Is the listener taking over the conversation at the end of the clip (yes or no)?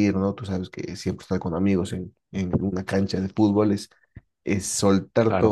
no